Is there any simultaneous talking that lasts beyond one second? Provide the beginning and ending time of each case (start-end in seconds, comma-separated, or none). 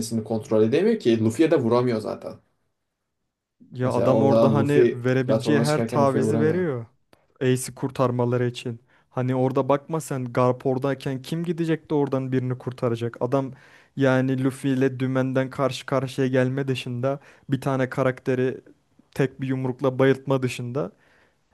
3.8-6.7